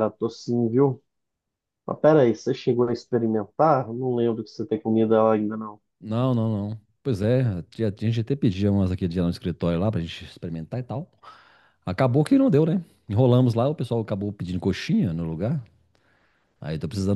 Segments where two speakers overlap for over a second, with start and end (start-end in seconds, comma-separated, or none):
none